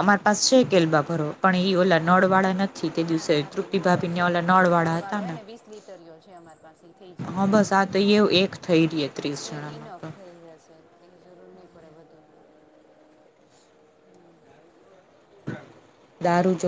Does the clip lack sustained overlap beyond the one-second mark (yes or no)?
no